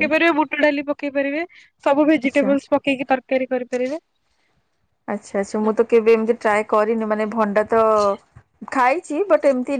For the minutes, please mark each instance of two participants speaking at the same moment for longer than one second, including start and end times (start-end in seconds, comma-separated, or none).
none